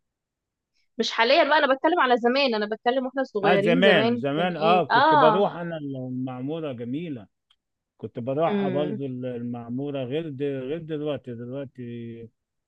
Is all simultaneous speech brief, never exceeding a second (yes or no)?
no